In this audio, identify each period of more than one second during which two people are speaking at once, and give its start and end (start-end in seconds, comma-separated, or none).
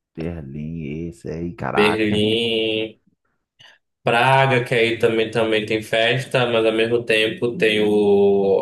none